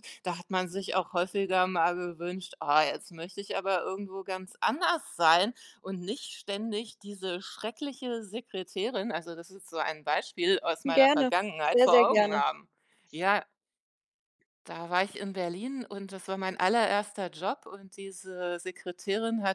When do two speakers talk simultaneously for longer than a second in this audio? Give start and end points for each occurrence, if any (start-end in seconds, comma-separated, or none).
10.8-12.4